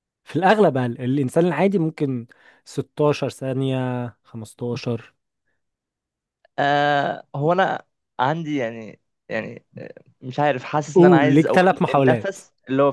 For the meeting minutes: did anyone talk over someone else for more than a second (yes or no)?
yes